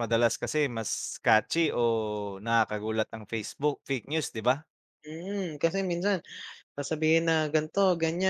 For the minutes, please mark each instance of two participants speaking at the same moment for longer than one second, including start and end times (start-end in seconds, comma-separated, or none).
none